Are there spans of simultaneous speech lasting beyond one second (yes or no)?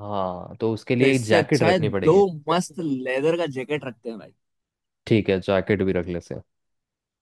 yes